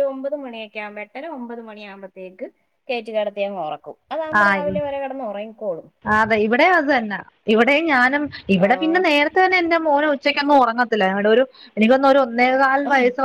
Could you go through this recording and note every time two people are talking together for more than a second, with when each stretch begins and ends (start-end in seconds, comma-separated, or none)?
none